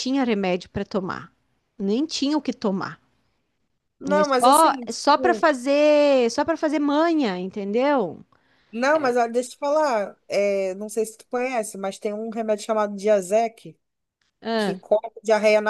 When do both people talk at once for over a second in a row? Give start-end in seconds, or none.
4.1-5.5